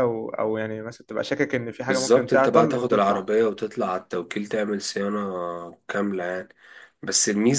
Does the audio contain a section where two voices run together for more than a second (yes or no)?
yes